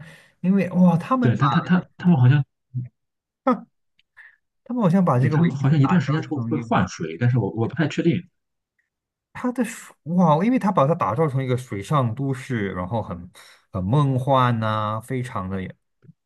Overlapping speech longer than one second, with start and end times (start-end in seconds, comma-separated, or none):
5.2-6.9